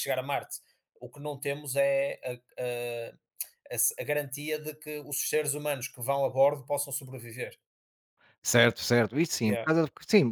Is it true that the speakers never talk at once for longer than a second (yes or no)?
yes